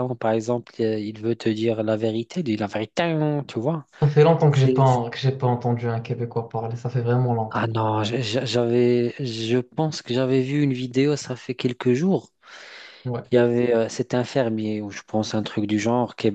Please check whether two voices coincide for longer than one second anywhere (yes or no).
no